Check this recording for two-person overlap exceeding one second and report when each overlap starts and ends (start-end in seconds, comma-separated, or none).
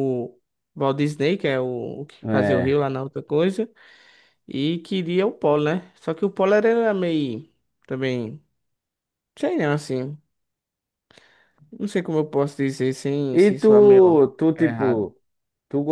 13.3-15.1